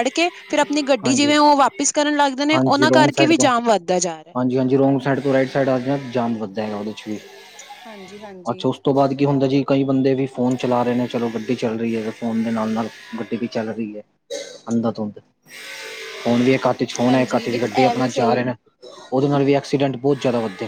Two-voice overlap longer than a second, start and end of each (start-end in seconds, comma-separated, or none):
17.1-18.4